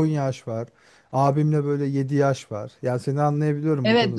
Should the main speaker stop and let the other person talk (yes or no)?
yes